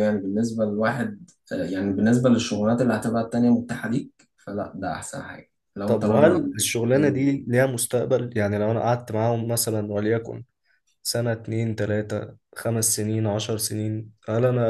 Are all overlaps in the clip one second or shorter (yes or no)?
no